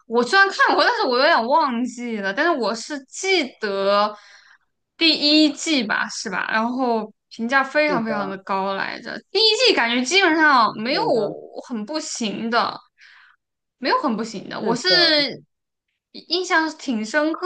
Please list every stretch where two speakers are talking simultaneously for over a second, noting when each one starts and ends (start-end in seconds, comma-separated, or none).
none